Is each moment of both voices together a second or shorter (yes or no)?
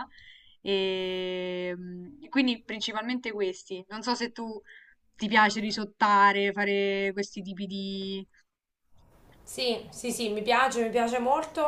yes